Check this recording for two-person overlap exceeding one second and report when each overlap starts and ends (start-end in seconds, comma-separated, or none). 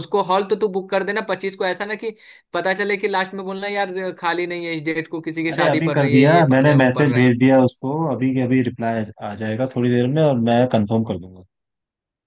5.5-7.3